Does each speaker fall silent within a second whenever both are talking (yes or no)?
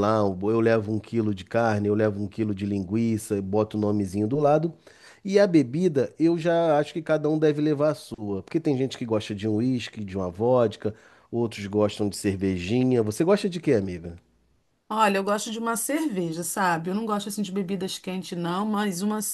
yes